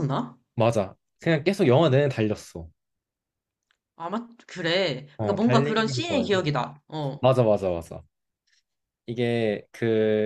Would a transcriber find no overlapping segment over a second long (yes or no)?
no